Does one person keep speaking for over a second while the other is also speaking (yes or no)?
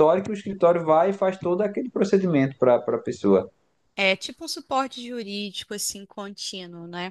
no